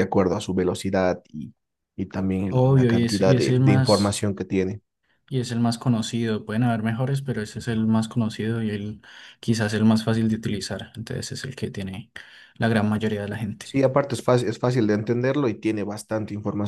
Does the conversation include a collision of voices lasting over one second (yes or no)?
yes